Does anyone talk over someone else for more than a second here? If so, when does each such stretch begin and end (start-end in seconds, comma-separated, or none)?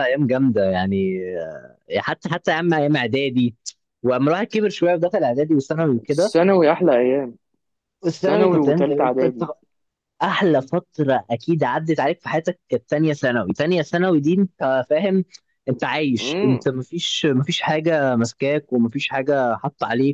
8.2-9.5